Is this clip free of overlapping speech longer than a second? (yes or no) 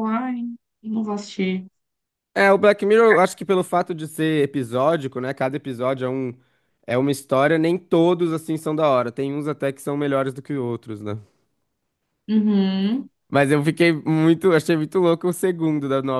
yes